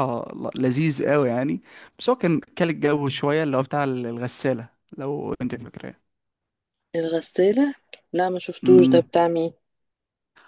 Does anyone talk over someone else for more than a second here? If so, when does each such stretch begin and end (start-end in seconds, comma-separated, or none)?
none